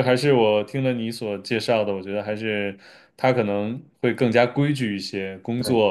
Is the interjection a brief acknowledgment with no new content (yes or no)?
yes